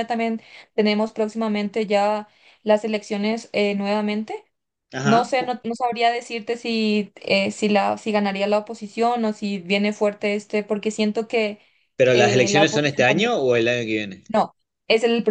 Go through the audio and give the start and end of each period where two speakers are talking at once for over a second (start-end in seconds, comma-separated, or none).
12.1-13.3